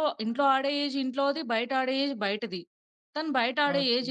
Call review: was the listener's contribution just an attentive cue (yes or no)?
yes